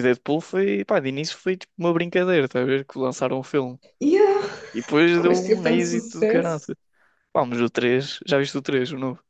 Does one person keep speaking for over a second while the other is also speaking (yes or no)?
yes